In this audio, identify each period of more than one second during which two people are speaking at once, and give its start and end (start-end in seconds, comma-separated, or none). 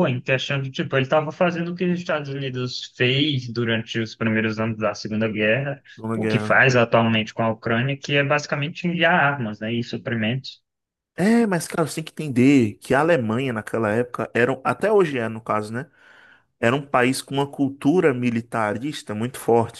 none